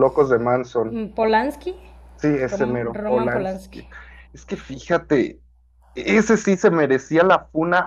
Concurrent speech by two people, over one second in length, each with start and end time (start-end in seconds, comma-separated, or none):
2.5-3.8